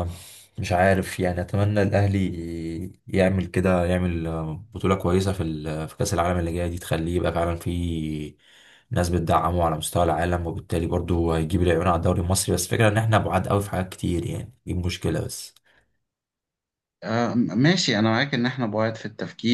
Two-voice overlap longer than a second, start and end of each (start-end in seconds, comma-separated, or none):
none